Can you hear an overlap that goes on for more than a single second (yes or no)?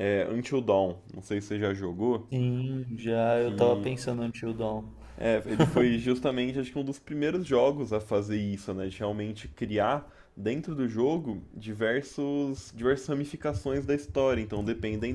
no